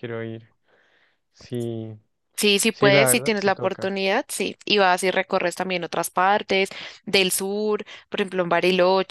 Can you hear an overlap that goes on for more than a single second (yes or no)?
yes